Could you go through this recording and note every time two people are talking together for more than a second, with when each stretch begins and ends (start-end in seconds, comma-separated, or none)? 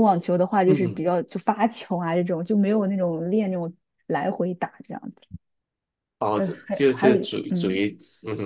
6.3-7.8